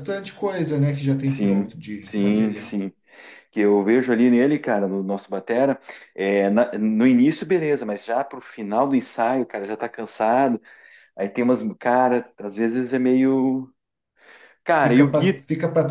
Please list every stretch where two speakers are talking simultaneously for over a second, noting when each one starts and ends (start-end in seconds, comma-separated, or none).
1.2-2.8